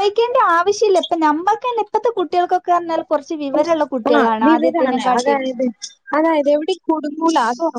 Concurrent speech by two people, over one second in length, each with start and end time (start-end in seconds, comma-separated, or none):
none